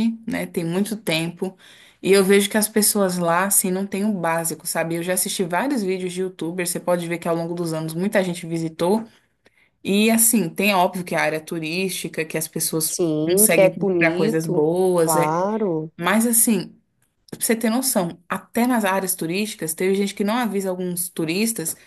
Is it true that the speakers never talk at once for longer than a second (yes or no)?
no